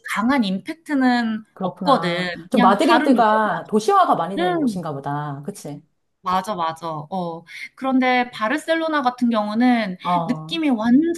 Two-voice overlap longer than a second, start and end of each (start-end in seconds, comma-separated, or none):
1.5-3.8